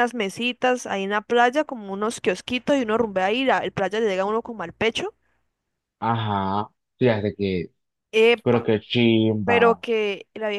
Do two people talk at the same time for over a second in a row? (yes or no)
no